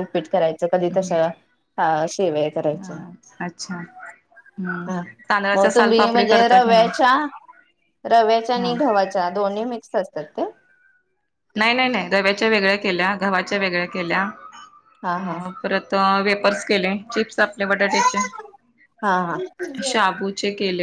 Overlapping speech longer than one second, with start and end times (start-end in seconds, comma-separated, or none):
5.5-6.9